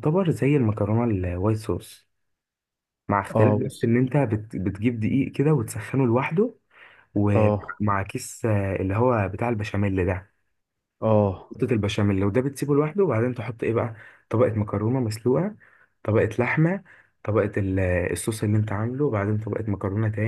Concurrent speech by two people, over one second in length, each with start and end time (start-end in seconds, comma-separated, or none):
none